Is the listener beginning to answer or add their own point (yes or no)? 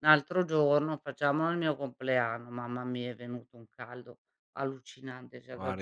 yes